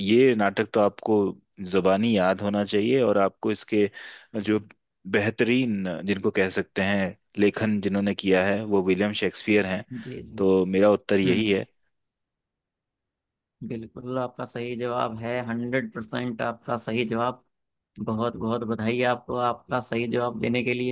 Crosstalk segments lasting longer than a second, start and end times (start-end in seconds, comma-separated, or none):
none